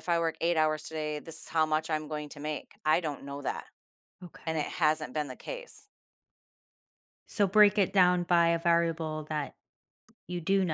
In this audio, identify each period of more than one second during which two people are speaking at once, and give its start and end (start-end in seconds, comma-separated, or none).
none